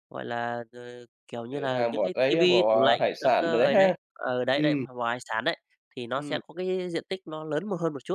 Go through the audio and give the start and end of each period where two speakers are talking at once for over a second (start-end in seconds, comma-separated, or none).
1.5-3.9